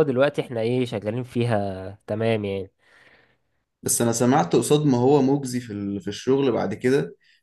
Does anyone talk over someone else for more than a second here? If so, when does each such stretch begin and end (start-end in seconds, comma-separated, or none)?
none